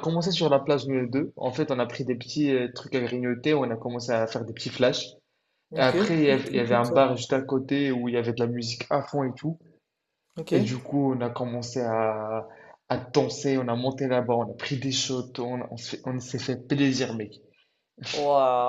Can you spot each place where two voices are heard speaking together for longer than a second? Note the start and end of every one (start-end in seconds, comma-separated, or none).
5.8-7.0